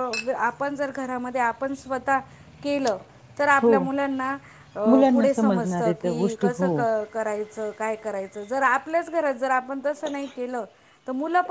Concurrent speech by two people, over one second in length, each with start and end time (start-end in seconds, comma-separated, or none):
5.1-6.7